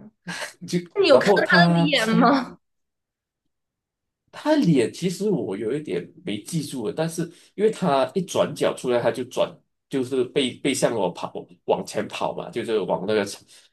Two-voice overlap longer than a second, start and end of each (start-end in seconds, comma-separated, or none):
0.9-2.3